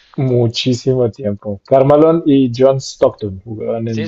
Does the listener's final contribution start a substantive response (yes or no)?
yes